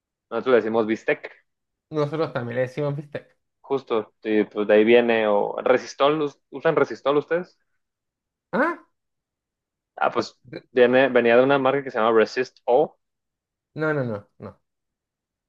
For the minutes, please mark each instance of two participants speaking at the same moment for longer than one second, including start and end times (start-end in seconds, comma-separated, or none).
none